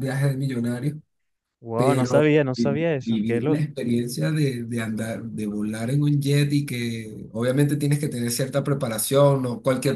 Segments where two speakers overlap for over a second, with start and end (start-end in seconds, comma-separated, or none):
1.8-3.7